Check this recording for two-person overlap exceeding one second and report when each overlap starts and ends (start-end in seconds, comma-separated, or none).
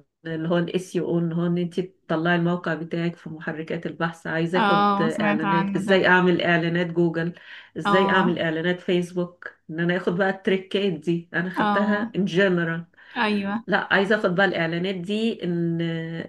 4.6-6.0